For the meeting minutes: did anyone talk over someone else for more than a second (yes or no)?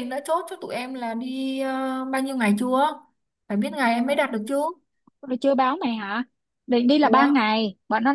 no